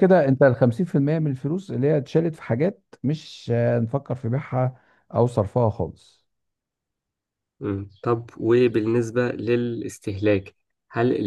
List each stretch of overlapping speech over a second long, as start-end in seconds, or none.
none